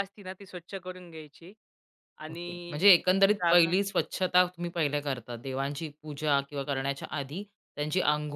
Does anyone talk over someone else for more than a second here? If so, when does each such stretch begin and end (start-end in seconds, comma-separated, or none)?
2.3-3.7